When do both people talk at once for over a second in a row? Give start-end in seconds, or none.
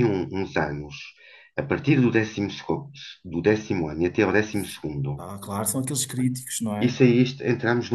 none